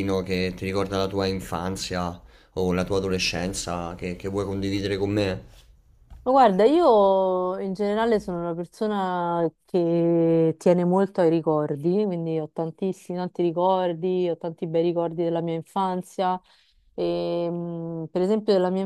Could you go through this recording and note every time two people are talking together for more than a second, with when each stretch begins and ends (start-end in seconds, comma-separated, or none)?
none